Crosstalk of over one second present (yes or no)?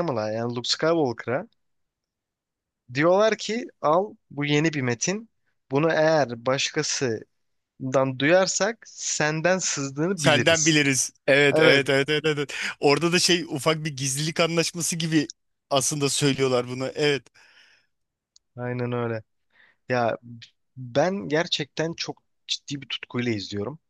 no